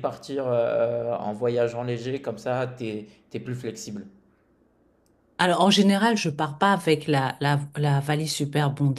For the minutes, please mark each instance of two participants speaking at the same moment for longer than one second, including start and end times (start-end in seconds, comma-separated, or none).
none